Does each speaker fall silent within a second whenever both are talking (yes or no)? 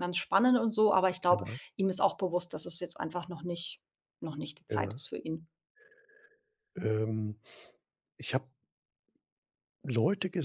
yes